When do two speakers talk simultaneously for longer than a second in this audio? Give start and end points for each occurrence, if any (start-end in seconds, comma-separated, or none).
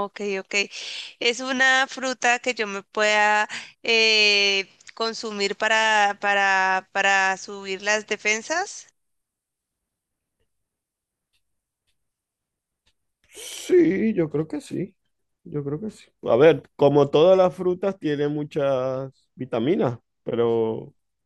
none